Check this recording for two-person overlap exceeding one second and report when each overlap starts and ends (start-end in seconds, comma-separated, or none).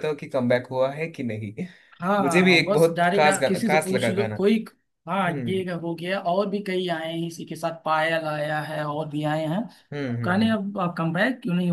2.2-4.3